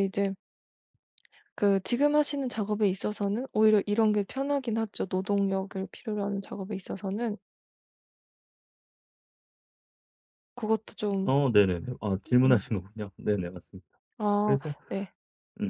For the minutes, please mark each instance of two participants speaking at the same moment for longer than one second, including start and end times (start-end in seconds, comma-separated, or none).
none